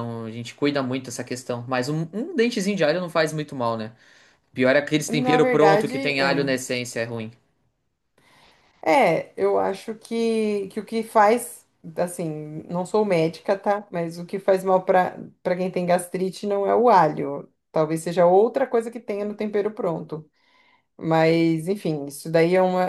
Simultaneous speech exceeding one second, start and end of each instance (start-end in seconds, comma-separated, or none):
5.1-6.5